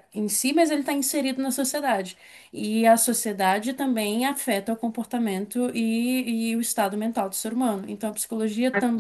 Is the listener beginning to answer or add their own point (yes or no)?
no